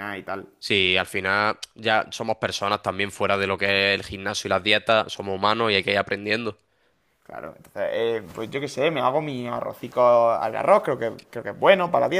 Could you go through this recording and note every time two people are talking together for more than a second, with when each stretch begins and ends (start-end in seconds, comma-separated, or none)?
none